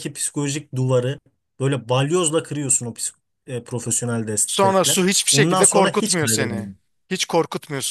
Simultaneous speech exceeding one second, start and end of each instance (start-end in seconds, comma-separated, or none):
4.5-6.7